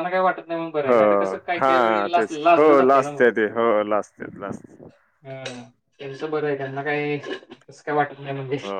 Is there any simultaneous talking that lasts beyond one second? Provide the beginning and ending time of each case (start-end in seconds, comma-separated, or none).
1.6-3.2